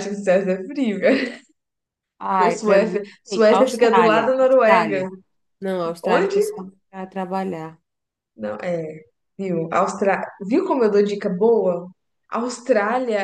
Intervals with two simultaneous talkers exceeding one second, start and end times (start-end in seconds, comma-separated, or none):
2.4-5.1